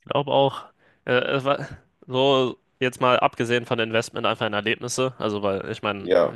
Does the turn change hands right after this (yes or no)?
no